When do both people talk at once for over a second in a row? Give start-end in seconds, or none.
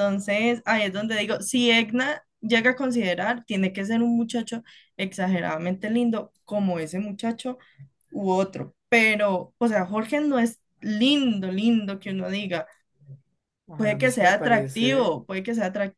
13.8-15.2